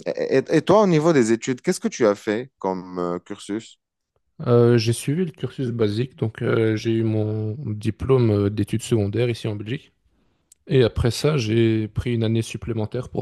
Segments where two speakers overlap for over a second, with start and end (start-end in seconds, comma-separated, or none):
none